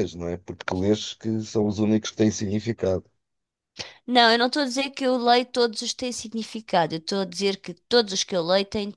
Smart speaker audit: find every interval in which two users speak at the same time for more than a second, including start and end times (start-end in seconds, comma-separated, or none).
none